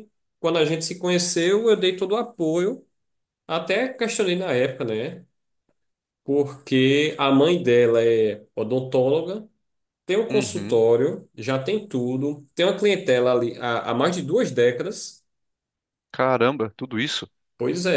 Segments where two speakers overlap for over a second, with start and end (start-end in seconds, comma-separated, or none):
none